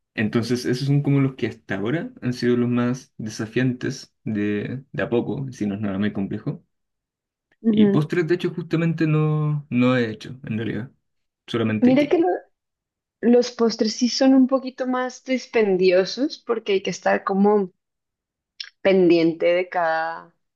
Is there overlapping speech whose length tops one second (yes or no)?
no